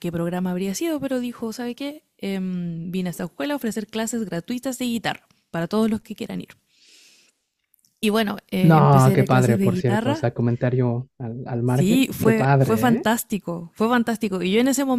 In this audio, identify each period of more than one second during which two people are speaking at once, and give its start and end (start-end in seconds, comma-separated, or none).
8.6-10.3, 11.6-13.1